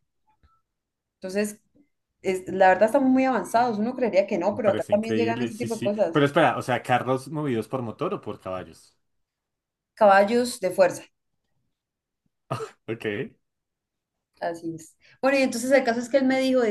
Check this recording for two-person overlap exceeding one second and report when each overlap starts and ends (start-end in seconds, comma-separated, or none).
4.5-6.2